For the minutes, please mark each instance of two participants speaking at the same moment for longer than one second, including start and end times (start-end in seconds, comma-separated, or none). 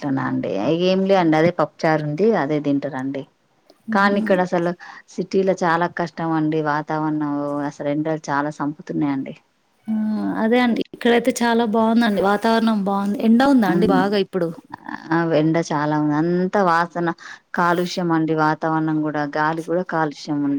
none